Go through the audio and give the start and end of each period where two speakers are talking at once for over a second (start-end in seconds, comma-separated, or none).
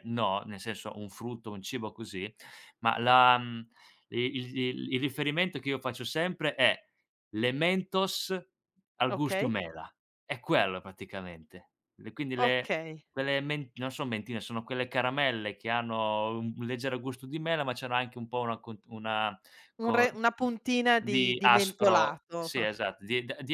21.0-22.5